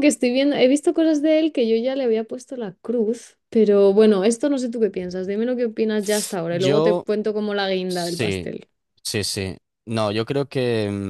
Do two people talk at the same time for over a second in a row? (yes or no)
no